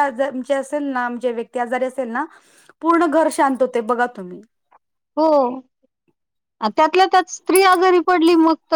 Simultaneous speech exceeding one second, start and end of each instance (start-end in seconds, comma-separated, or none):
none